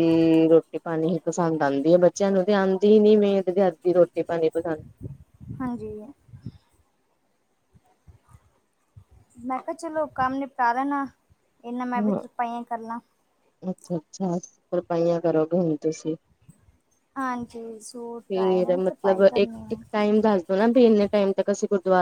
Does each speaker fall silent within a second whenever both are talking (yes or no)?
no